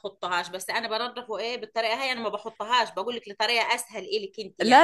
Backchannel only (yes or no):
no